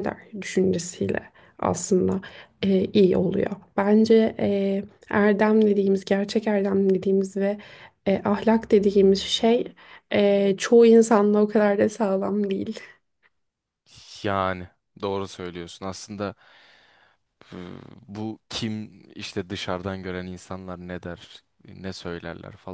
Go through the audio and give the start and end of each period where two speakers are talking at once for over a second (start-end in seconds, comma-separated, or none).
none